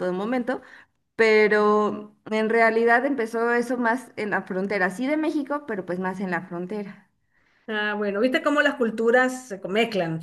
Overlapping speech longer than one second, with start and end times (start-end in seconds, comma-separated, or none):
none